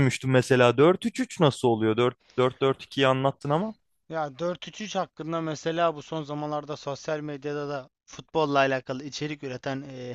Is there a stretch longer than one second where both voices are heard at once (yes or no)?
no